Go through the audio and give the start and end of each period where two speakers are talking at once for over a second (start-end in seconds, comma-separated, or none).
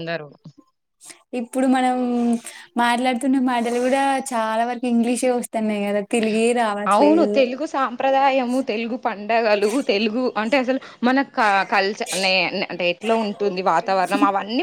none